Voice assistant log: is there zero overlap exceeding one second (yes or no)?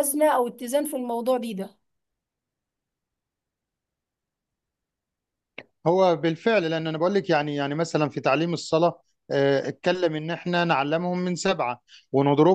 yes